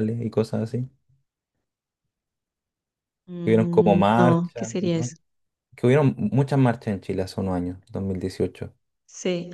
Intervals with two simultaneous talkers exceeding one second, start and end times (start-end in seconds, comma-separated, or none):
3.4-5.1